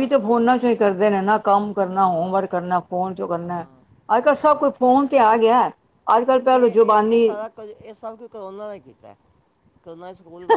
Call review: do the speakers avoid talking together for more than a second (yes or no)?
yes